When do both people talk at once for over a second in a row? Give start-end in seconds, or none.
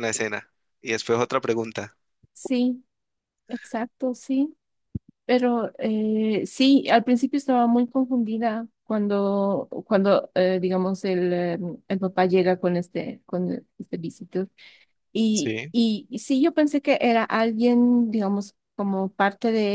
none